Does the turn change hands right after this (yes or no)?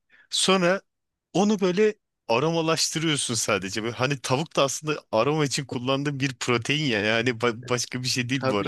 yes